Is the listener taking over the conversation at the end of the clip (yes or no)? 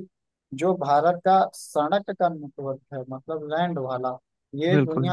no